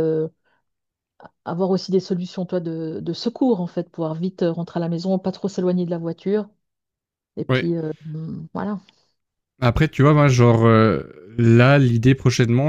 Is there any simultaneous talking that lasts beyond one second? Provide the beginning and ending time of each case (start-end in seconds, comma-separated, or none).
none